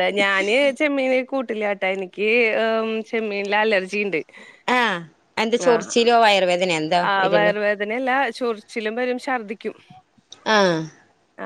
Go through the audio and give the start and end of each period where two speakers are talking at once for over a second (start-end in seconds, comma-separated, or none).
none